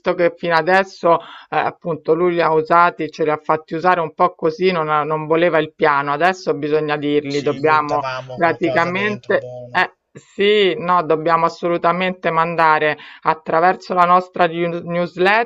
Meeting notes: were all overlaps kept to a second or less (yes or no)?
no